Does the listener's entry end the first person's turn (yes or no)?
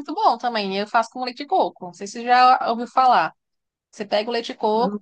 no